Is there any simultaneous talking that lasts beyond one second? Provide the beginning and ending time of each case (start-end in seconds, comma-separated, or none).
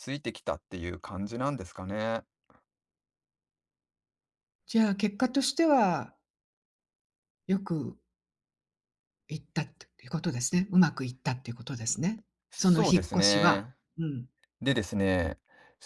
12.5-13.8